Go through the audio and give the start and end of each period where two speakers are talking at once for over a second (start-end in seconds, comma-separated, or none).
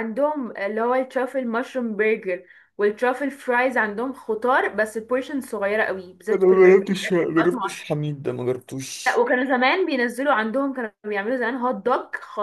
6.3-7.8